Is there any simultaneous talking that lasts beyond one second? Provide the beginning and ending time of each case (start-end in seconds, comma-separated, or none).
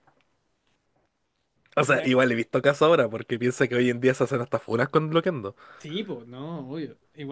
none